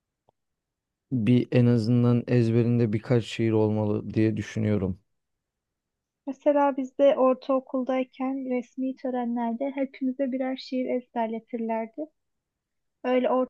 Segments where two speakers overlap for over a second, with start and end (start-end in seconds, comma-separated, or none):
none